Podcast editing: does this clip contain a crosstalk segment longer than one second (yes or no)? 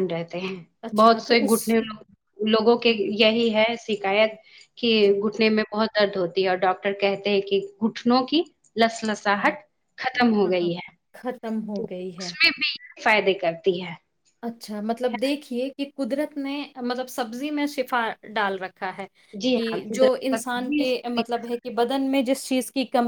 yes